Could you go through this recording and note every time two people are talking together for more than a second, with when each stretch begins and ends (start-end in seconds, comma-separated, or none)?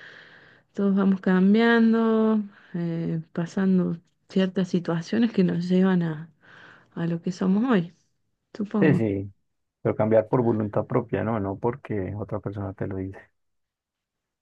none